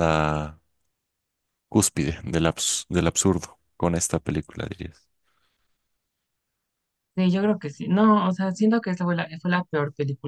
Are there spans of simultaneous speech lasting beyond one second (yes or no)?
no